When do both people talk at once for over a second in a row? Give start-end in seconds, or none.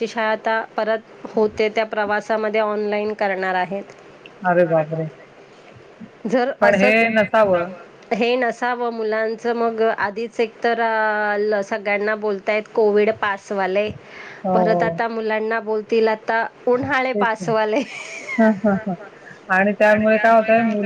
none